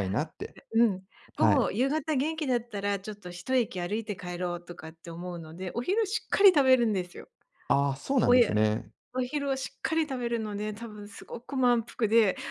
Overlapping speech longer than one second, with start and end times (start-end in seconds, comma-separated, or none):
none